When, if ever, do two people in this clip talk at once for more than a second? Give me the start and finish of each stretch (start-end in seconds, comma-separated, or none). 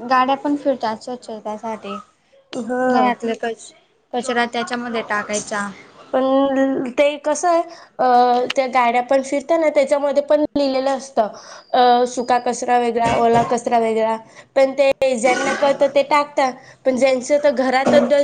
none